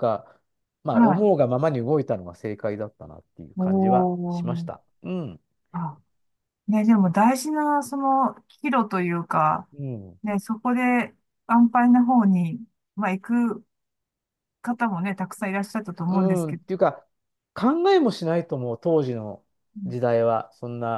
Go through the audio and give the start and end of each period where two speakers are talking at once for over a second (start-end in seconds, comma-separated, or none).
3.6-4.8